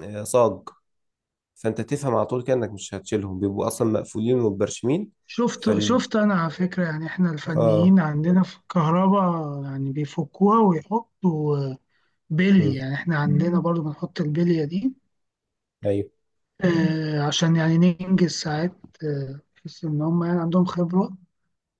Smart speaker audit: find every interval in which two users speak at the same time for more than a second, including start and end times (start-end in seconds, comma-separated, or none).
none